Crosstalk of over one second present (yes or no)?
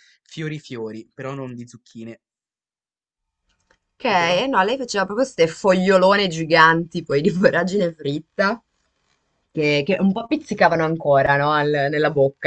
no